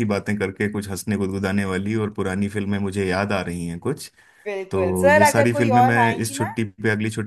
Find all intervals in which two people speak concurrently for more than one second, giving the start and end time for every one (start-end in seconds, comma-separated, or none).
4.7-6.5